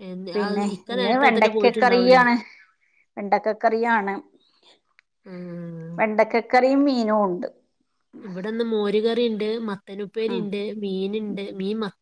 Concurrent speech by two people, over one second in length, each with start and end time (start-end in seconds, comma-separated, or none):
1.0-2.2